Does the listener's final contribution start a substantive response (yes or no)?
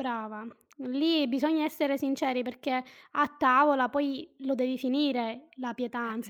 no